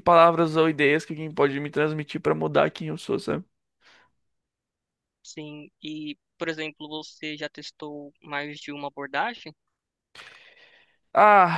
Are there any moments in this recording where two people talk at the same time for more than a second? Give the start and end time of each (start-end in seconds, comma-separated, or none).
none